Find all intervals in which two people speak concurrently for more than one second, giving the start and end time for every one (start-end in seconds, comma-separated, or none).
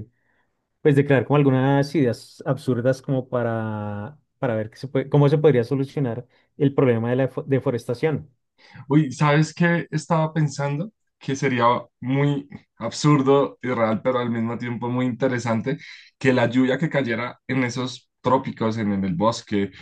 none